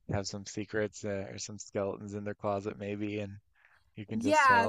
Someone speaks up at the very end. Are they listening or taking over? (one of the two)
taking over